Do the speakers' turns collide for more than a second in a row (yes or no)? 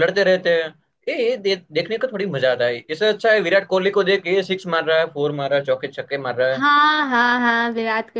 no